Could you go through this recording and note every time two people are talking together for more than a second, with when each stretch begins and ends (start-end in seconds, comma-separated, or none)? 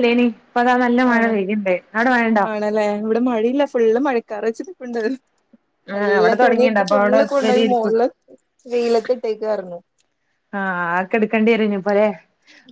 6.0-7.9